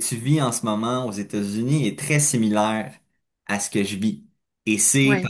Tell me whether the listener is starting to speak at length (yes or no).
no